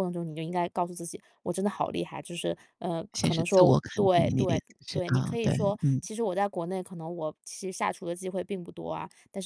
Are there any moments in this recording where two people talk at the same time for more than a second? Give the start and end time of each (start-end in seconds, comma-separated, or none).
3.1-6.0